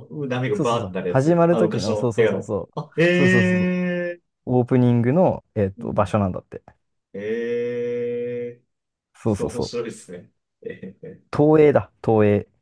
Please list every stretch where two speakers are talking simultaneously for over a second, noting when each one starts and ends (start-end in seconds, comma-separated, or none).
0.5-3.0